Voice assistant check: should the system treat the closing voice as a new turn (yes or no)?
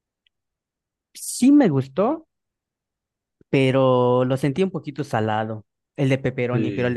yes